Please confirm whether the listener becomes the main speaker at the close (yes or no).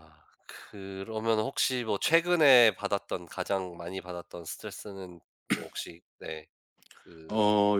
yes